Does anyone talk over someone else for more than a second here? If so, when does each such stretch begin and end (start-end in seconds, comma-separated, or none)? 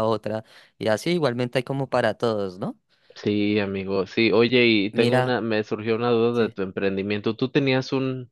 none